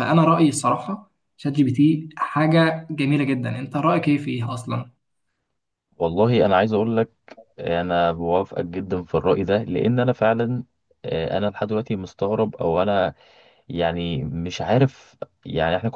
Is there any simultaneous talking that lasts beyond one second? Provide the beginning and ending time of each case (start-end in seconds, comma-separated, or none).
none